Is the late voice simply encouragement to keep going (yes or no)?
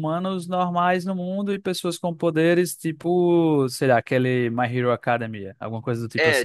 no